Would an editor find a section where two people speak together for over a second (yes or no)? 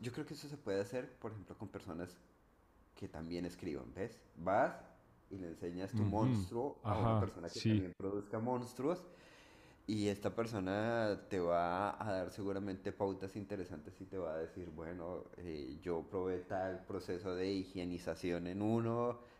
yes